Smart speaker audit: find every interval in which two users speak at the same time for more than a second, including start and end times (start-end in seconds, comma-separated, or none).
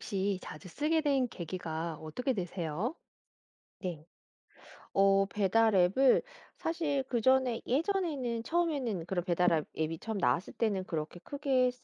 none